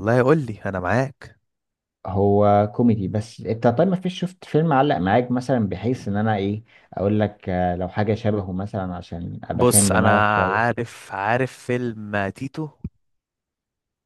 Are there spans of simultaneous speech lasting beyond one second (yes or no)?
yes